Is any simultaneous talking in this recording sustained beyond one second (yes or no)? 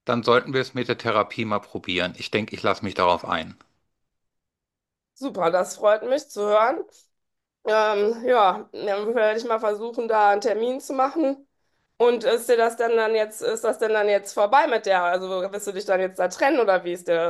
no